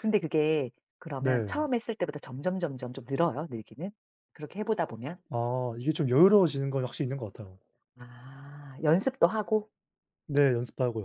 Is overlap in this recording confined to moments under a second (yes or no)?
yes